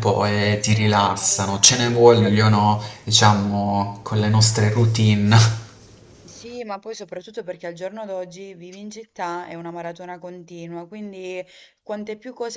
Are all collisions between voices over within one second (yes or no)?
no